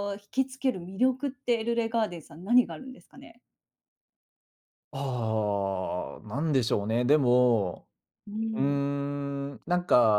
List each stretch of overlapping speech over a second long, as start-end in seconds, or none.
none